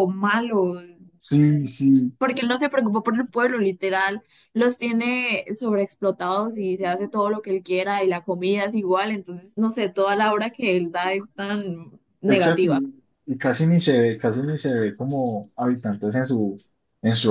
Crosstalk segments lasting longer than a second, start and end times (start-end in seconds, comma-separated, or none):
none